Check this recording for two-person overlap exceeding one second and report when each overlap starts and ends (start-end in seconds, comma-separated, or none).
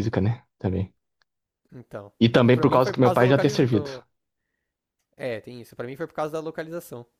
2.5-3.9